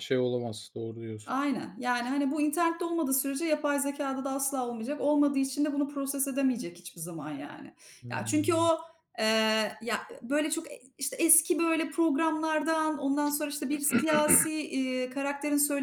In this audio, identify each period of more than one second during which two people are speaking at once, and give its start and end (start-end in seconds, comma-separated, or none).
none